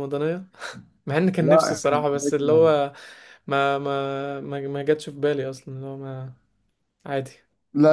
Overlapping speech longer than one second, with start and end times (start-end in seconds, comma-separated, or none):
1.4-2.7